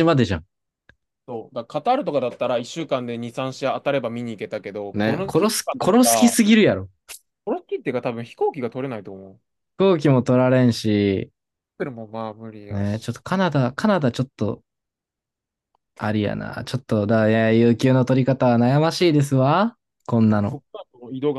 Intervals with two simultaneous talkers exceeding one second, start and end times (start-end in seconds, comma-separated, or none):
4.9-6.4